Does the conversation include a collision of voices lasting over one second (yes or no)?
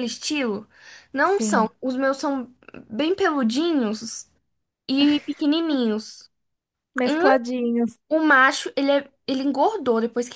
no